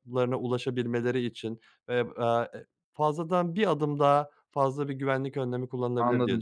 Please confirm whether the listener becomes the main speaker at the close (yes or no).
yes